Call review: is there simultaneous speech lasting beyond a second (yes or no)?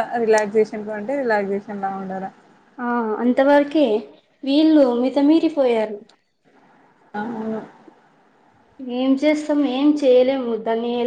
no